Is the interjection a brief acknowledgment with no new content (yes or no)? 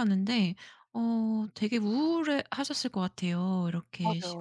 no